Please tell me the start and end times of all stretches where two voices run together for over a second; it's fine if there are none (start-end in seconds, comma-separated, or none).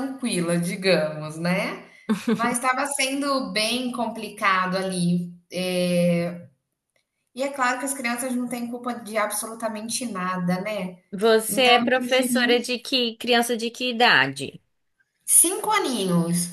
11.5-12.7